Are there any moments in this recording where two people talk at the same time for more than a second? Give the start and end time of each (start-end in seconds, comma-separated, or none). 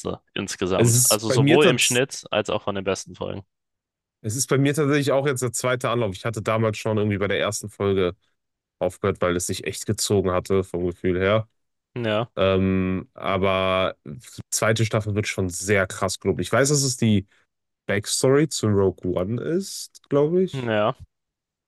0.8-2.0